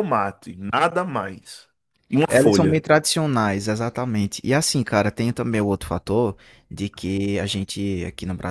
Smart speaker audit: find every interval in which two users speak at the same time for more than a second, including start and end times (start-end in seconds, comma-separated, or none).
none